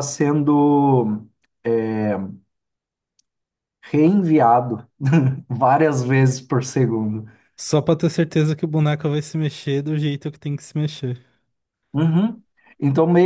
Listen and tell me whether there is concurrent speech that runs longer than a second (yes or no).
no